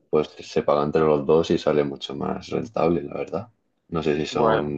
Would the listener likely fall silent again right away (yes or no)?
yes